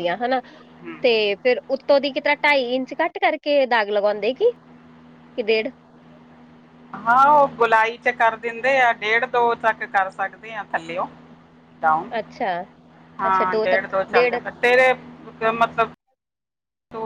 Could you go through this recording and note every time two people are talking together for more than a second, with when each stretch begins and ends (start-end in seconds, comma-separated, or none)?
none